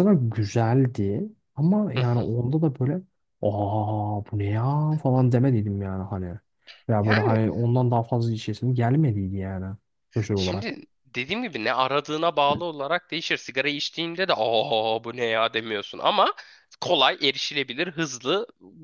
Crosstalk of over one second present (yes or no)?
no